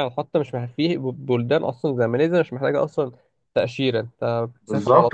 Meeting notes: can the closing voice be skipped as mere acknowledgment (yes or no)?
no